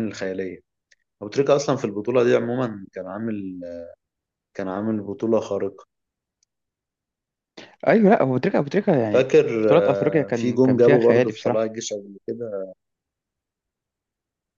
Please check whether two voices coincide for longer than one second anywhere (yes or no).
yes